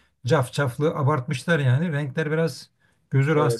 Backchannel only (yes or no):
no